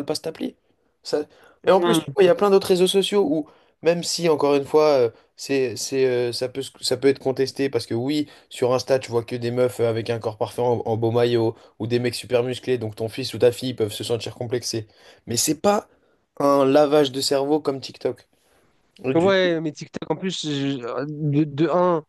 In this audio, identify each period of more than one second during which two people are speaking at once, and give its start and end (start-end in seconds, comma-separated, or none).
none